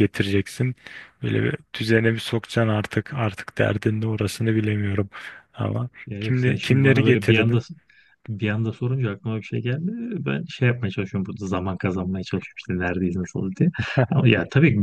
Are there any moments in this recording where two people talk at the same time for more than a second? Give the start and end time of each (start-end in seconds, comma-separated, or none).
6.1-7.6